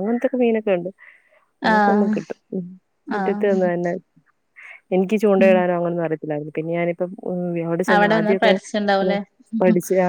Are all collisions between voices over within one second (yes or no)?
yes